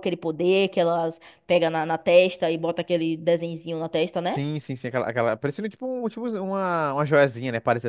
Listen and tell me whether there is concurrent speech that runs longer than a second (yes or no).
no